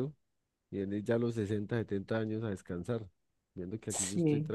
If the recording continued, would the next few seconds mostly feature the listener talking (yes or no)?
no